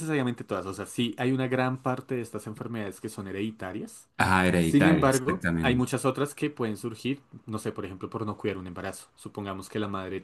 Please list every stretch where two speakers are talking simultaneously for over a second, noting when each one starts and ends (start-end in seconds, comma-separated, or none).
4.6-5.9